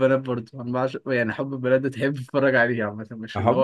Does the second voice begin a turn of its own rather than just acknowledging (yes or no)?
yes